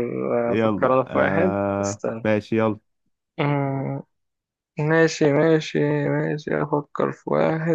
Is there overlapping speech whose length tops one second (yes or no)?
yes